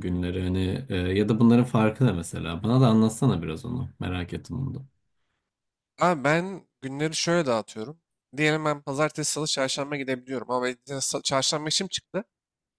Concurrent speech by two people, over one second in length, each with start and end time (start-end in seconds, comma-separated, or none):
none